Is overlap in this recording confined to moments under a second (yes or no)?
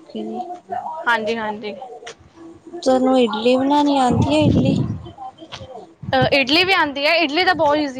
yes